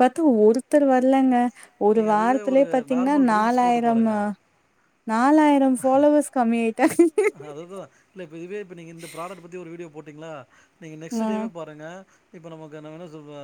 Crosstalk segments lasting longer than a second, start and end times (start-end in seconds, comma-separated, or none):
2.0-4.2